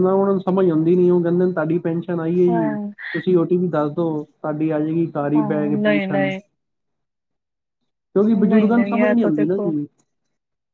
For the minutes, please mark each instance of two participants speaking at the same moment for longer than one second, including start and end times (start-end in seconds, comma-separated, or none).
8.5-9.7